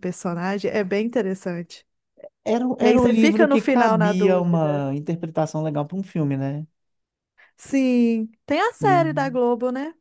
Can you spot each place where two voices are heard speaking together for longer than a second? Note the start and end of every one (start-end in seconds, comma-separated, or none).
2.8-4.9